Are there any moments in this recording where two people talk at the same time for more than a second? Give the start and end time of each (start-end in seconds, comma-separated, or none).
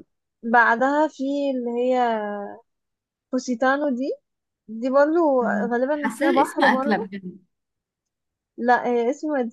5.4-7.1